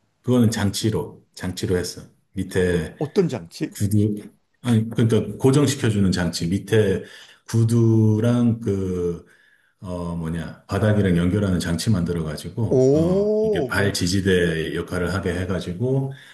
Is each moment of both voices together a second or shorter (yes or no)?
no